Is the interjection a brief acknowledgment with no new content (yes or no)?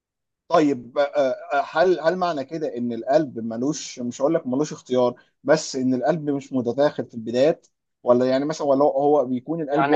yes